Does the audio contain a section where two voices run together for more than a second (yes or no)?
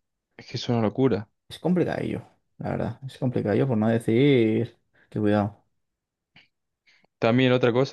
no